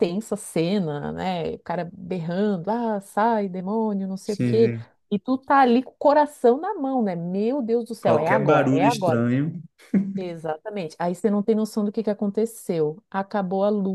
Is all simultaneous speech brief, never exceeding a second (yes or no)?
no